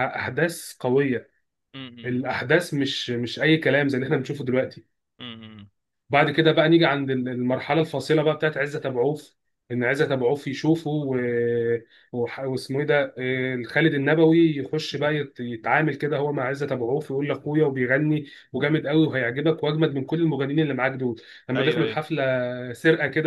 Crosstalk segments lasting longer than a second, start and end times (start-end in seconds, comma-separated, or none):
none